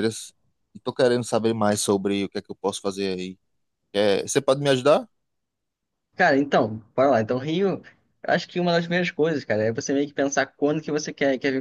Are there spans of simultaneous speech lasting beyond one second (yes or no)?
no